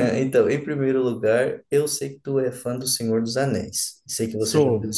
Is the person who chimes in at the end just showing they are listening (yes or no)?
yes